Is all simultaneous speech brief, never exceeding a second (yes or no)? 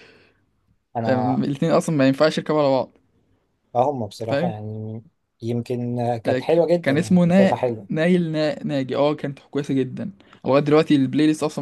no